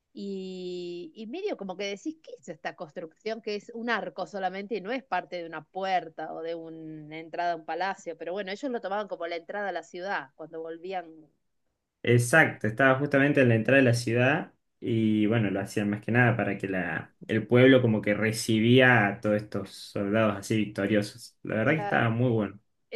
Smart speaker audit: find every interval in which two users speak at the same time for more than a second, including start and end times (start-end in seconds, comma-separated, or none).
none